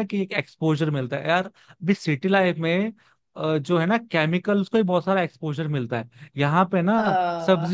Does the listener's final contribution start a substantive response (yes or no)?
no